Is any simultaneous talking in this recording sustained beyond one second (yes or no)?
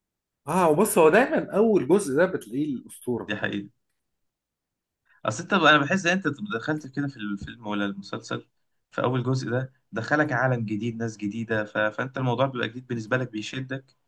no